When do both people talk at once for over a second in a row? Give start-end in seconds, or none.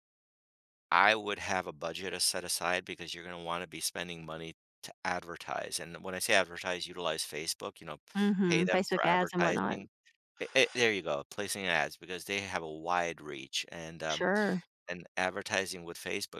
8.4-9.8